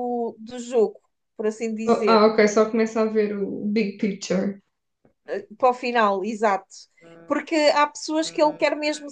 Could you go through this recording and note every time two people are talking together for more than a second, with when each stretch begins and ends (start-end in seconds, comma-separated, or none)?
none